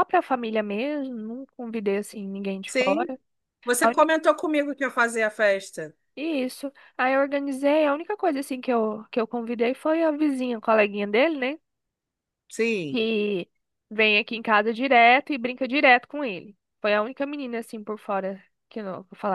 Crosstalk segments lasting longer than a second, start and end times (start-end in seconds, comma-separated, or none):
none